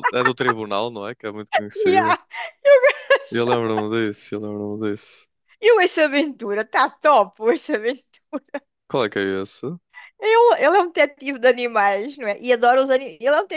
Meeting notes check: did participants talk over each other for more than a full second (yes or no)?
no